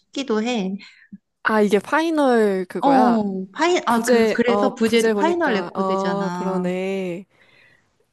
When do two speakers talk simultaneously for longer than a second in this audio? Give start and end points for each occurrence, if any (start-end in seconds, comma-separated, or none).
3.9-6.7